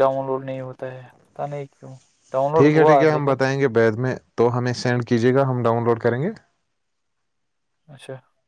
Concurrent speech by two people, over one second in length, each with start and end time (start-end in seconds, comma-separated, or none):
none